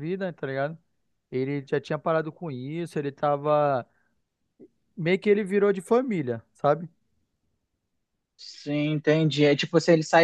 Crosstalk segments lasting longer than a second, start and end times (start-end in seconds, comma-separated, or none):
none